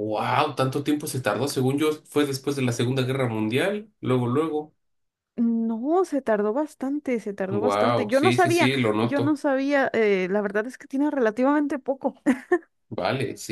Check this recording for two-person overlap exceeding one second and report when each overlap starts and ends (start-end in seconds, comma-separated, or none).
7.5-9.4